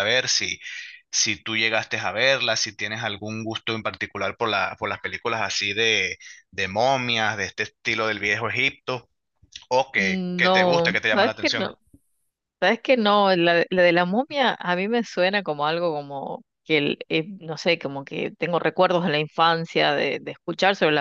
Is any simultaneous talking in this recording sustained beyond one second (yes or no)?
yes